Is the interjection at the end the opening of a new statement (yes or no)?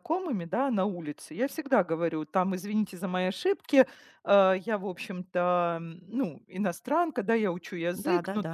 no